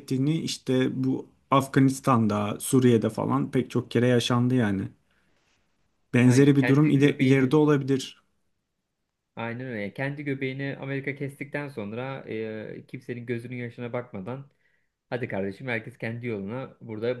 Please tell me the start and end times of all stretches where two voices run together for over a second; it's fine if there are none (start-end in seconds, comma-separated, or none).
6.2-7.6